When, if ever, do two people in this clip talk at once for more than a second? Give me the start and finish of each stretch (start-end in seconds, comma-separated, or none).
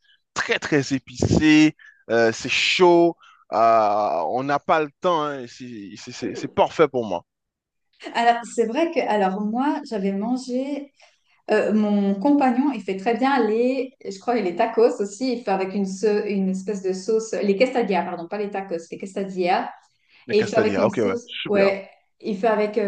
20.3-21.7